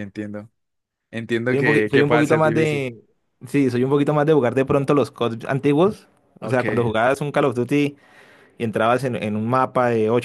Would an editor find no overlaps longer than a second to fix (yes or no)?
no